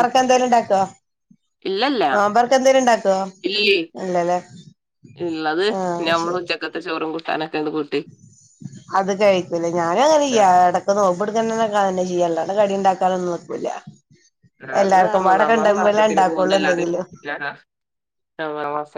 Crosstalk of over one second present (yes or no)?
yes